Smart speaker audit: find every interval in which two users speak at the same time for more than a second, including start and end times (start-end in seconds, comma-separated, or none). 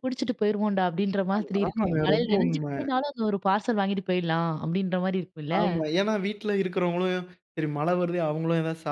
1.4-2.7